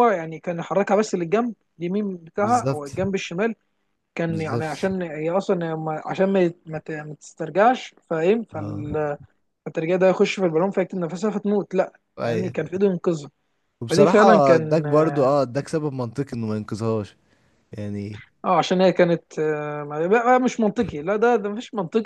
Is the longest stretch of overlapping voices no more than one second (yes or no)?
no